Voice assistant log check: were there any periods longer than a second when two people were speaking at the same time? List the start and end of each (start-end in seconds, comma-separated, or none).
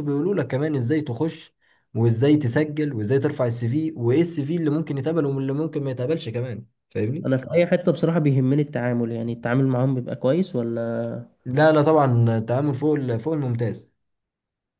none